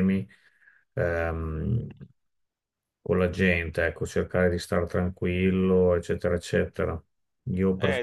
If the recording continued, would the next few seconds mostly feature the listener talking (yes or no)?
yes